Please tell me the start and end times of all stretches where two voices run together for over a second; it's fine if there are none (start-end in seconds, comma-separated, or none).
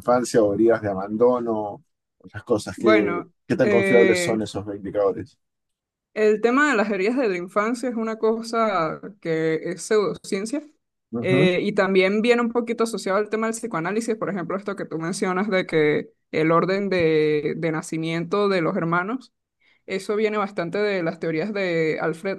2.8-4.4